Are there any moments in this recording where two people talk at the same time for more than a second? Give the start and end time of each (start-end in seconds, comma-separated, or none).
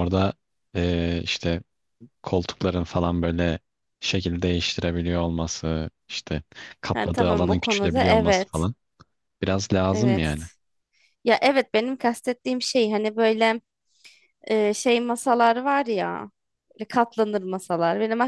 6.9-8.7